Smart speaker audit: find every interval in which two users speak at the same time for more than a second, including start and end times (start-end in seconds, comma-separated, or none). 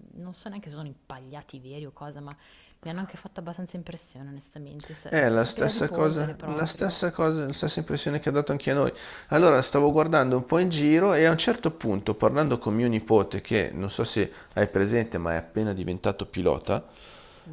5.1-7.0